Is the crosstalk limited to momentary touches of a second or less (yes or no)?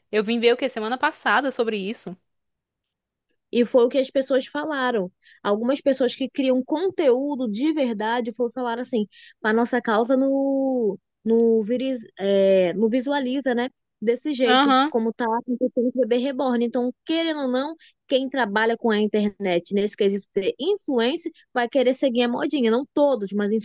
yes